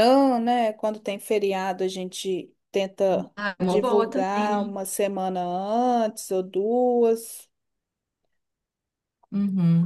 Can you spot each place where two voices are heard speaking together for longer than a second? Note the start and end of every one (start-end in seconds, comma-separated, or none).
3.4-4.8